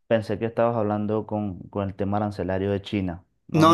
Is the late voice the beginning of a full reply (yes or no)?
yes